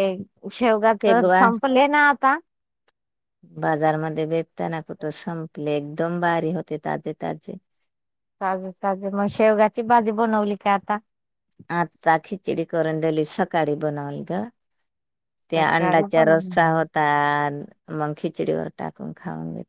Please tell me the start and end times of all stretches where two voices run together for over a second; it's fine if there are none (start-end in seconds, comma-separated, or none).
15.5-16.9